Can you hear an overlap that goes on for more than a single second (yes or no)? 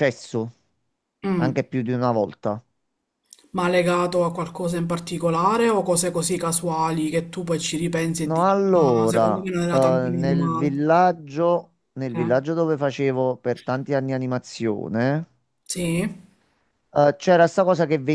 yes